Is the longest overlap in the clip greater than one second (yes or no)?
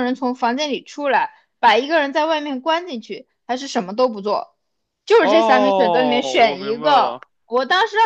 yes